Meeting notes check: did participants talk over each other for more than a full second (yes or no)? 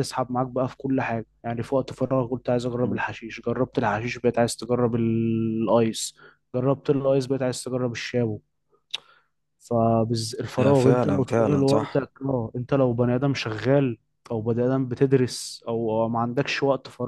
yes